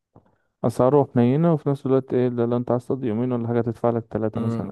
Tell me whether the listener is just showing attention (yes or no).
no